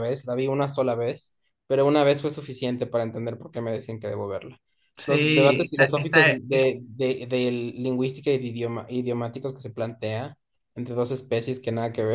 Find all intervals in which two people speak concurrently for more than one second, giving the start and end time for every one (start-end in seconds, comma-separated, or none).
5.1-6.7